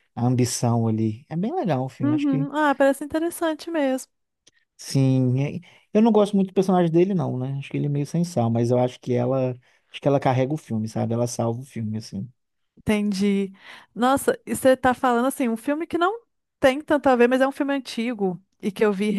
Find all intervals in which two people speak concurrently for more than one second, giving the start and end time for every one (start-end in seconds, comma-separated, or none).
none